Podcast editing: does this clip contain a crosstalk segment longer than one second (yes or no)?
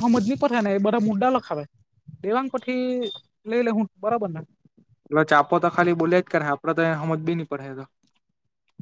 no